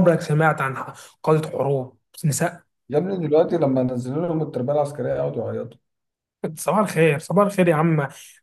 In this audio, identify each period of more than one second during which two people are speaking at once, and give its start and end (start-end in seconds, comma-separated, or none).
none